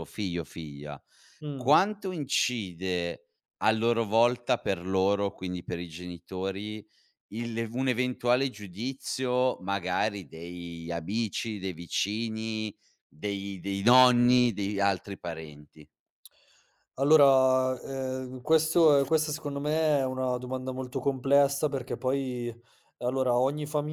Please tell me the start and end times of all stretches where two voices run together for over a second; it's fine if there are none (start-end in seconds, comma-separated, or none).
none